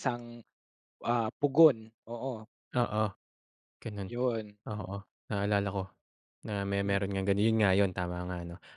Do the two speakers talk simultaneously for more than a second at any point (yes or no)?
no